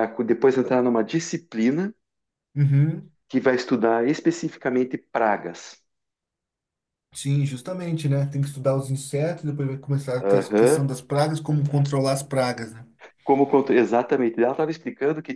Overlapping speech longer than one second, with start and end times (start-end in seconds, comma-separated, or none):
none